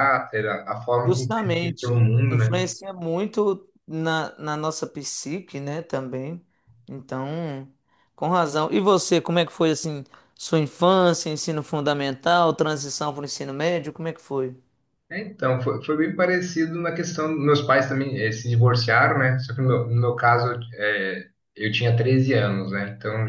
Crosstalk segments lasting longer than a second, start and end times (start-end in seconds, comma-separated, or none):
1.0-2.6